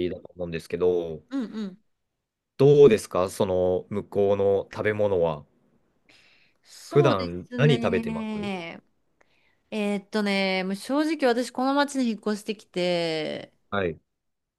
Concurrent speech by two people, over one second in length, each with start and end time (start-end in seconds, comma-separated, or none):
6.9-8.5